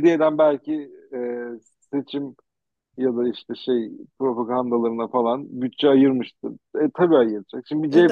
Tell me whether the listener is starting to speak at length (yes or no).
no